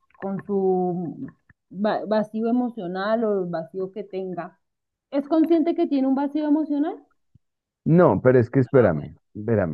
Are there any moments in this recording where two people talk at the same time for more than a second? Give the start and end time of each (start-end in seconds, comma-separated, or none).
none